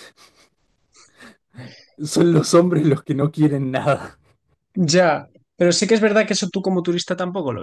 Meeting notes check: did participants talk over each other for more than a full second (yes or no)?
no